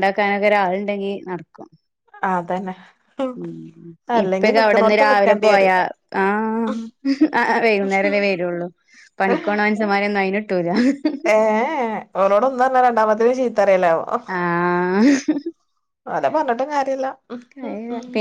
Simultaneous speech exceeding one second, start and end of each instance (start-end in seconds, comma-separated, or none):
4.2-5.7